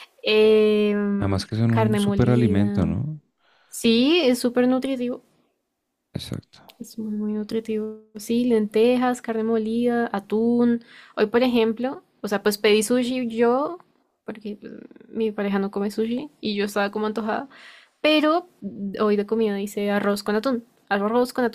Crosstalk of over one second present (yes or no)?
yes